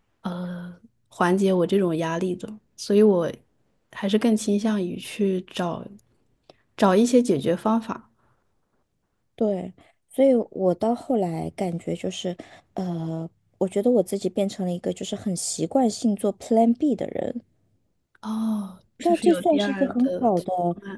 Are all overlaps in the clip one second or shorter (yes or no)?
no